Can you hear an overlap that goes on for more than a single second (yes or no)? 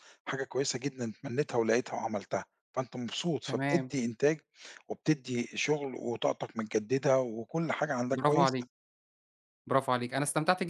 no